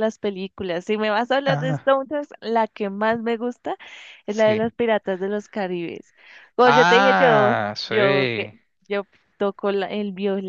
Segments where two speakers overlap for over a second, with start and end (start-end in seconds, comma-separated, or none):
6.6-8.5